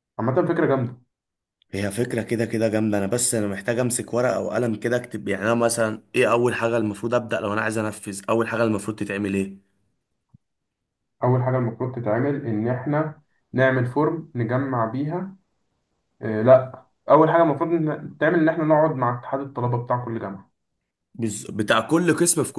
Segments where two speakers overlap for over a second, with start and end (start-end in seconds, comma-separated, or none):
none